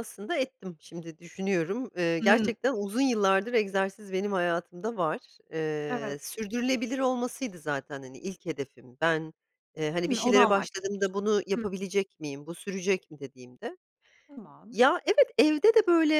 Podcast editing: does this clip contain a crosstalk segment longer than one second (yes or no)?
yes